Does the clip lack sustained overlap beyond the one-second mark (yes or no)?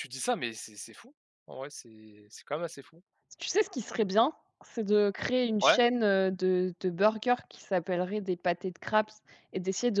yes